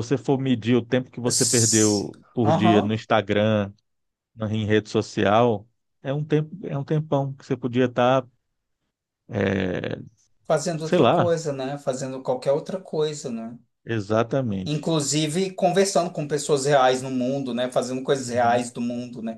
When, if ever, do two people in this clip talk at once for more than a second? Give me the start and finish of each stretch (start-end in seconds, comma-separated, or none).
1.2-3.0